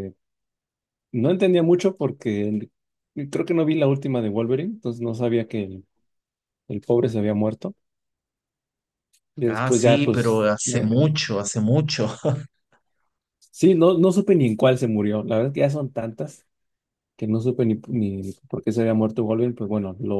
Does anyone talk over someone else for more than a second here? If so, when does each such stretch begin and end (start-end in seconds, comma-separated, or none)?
9.5-10.9